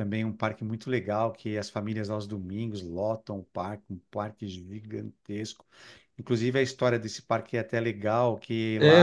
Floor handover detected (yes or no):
yes